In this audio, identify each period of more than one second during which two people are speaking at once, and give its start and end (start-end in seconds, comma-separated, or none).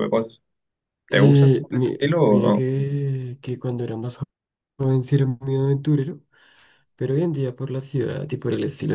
1.1-2.9